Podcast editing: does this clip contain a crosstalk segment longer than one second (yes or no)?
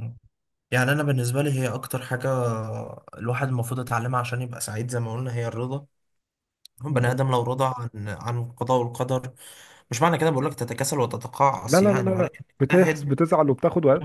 yes